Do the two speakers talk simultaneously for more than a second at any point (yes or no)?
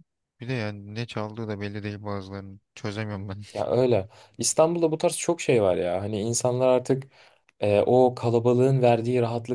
no